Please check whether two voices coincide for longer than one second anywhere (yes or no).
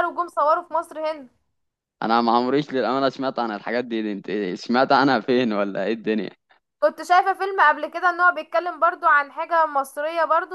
no